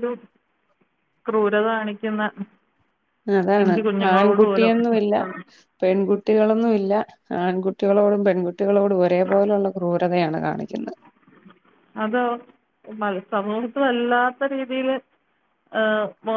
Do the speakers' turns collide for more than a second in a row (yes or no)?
yes